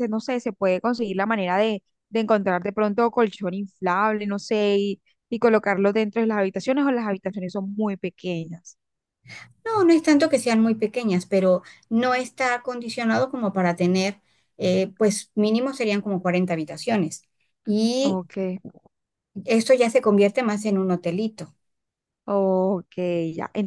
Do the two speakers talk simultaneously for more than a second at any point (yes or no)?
no